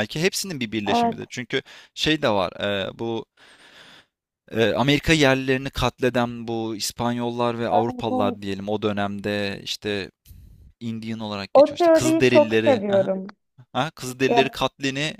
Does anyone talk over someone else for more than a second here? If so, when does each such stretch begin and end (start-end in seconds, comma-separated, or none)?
11.5-13.1